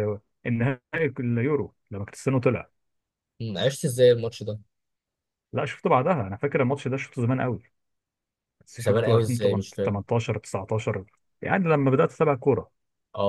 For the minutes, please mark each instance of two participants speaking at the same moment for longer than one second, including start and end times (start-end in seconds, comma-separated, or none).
8.8-10.0